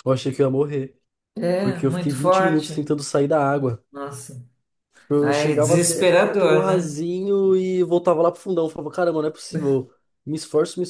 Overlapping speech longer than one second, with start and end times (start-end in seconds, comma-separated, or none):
1.6-2.9, 5.2-7.0